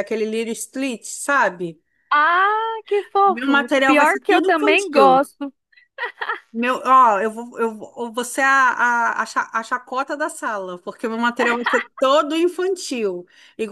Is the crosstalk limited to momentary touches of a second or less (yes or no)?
no